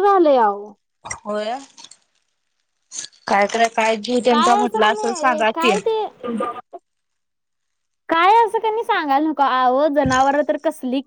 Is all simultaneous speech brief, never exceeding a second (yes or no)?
no